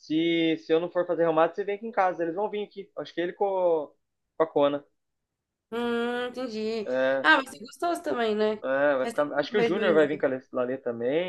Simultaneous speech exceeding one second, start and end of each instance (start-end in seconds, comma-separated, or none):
9.0-10.3